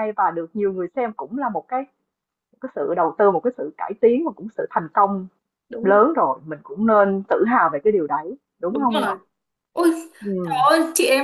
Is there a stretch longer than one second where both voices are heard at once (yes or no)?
no